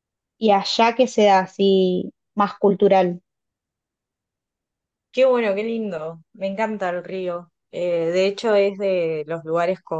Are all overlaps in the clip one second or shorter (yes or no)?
yes